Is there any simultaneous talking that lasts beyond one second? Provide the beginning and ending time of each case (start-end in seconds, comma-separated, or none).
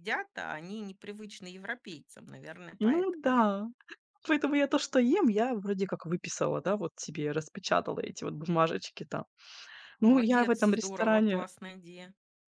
10.0-11.4